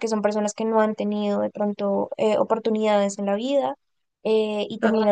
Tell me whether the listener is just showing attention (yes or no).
yes